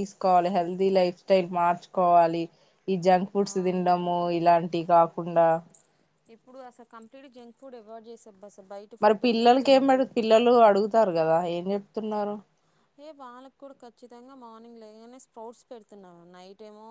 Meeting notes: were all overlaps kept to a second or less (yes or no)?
yes